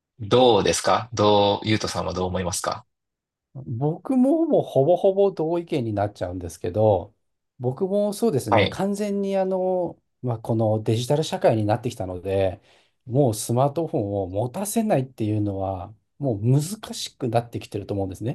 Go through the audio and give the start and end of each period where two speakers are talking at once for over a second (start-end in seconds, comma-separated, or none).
none